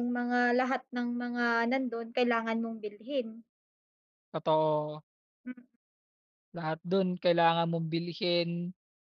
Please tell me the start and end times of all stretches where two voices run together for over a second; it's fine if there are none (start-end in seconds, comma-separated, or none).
none